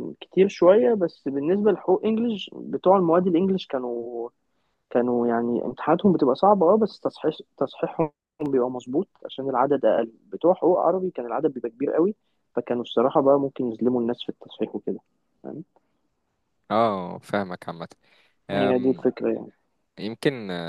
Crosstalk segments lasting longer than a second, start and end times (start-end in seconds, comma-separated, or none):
none